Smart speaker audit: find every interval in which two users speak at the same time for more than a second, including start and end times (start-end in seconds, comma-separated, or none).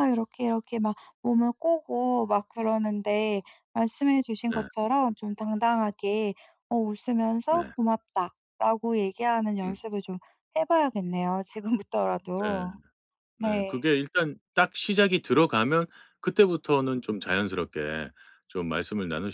none